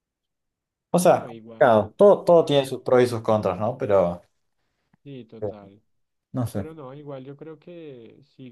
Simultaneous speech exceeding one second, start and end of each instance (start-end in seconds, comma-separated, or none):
1.1-2.8